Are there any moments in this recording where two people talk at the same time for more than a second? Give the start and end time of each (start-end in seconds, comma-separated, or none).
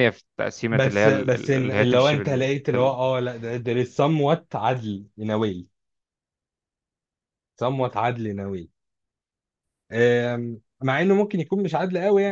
0.7-3.0